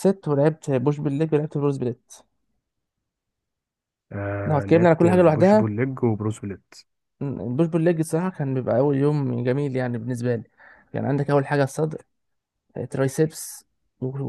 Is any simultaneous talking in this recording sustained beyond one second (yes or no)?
yes